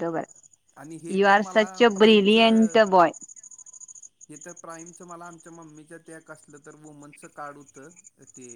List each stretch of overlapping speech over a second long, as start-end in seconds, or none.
1.2-2.8